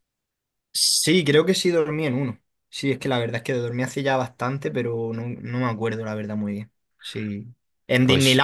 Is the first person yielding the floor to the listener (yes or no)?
no